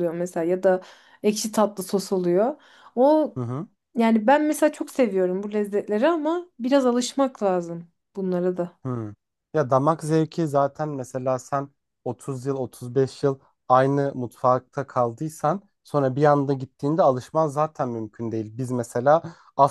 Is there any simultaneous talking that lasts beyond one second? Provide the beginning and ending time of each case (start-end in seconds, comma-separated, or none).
none